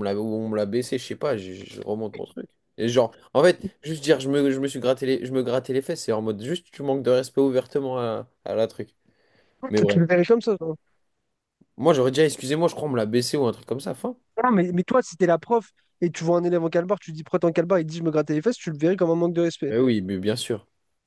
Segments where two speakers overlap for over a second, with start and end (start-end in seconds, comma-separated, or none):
none